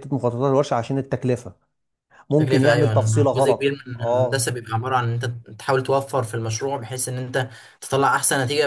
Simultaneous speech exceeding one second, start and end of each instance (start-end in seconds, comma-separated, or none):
2.4-4.5